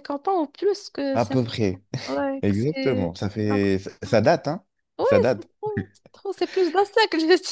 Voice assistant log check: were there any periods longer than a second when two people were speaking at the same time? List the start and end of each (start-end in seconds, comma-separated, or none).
2.4-4.2